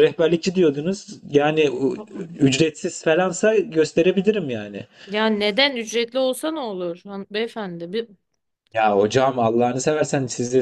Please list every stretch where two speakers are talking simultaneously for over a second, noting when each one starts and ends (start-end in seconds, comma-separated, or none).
none